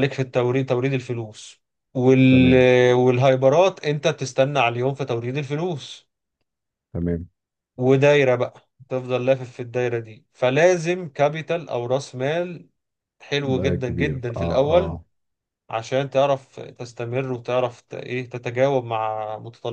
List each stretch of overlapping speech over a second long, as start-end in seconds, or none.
13.4-15.0